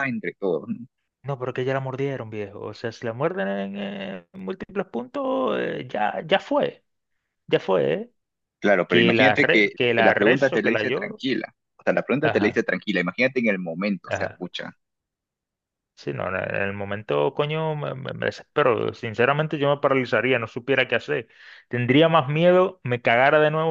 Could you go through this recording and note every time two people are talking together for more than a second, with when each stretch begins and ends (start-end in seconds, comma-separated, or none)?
8.9-11.2